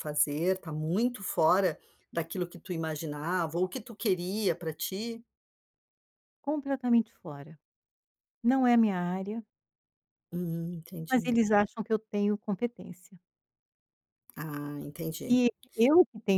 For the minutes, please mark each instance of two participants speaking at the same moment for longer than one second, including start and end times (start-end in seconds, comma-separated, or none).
none